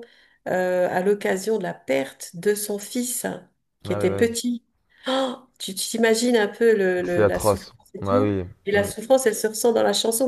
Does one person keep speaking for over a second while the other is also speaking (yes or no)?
yes